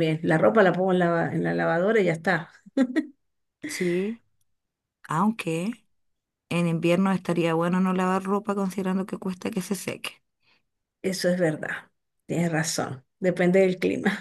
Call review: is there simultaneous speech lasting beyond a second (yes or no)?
no